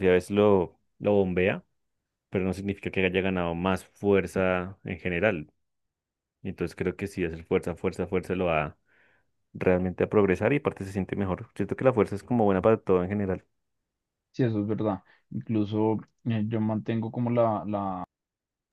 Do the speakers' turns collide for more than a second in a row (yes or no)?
no